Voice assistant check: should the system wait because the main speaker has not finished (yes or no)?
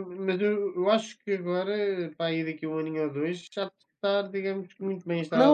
no